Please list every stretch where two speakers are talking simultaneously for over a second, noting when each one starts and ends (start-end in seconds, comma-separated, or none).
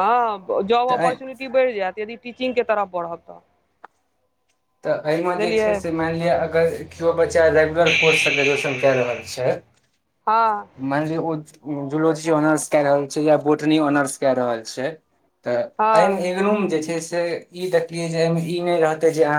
none